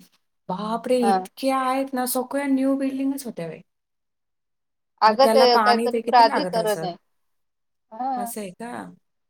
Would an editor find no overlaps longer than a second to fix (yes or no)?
no